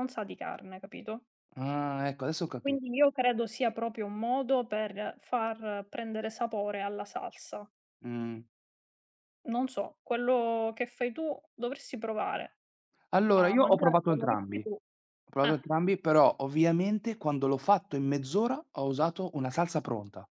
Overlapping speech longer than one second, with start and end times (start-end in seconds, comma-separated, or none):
13.3-14.8